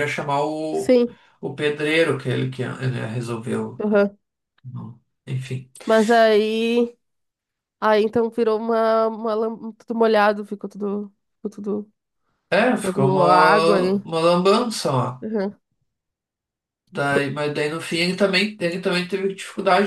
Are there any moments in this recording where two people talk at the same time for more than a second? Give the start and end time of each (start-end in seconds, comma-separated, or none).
12.8-14.0